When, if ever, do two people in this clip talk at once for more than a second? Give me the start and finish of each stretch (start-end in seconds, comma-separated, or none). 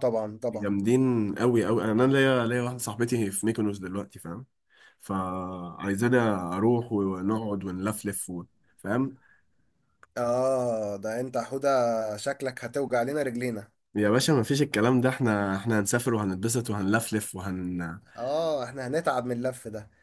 none